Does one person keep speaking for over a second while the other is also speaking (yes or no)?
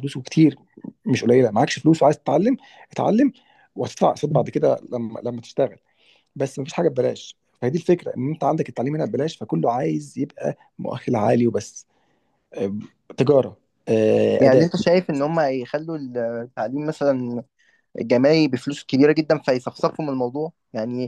no